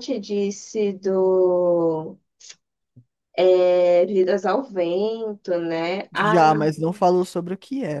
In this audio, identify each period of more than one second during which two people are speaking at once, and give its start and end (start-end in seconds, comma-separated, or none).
none